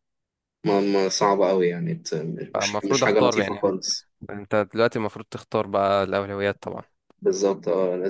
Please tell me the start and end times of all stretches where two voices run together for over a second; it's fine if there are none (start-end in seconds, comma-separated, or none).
2.6-3.8